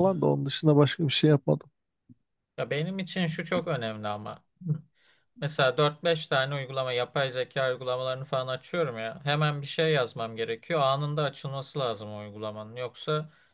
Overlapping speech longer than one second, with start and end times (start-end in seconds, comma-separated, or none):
none